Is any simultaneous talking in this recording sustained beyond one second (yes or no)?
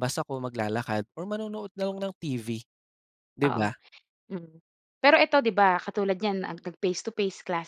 no